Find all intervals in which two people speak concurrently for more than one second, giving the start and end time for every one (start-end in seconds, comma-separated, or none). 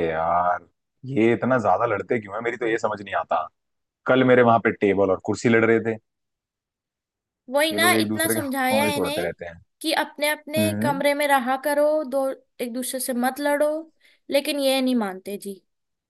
7.7-9.3